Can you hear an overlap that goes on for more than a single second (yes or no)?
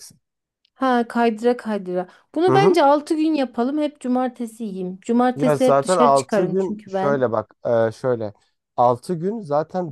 yes